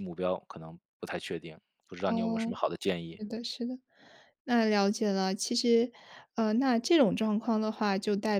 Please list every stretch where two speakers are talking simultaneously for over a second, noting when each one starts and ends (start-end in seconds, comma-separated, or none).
none